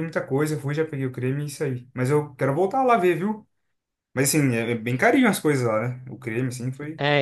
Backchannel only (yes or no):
no